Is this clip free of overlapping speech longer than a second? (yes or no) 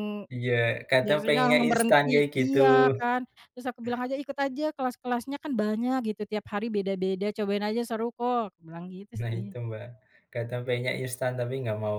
no